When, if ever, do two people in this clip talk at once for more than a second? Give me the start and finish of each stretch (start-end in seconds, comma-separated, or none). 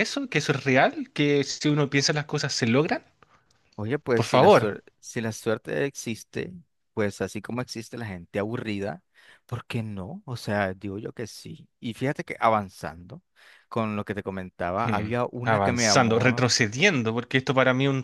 14.8-16.5